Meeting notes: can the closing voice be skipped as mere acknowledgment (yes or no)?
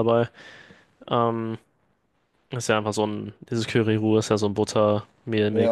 no